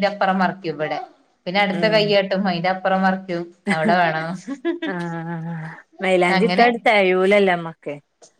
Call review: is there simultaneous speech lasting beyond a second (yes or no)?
no